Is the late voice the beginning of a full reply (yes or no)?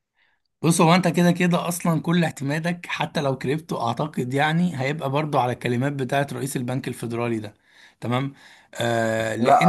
yes